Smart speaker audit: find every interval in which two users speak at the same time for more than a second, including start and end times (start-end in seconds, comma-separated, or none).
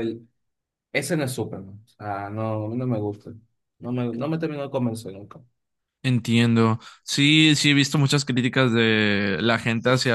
none